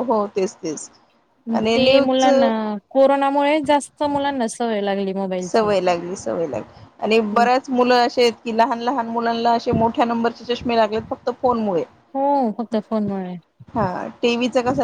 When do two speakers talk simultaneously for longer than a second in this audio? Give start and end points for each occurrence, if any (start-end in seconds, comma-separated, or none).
none